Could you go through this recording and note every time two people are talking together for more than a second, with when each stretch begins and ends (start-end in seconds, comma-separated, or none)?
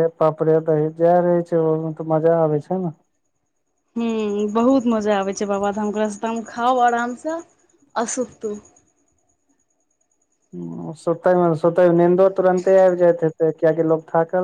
none